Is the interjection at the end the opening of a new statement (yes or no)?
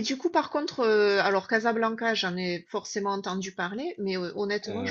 no